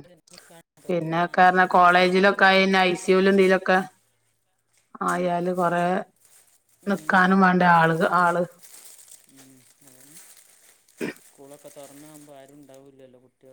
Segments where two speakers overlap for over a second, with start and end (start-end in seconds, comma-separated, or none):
1.1-2.5